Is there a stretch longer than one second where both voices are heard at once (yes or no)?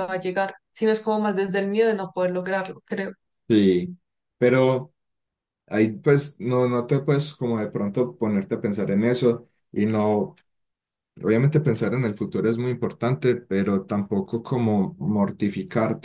no